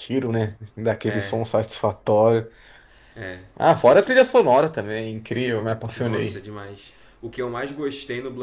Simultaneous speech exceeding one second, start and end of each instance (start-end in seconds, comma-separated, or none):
none